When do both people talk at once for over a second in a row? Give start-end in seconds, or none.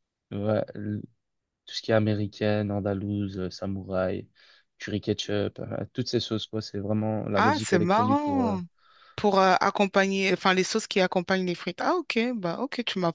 7.4-8.6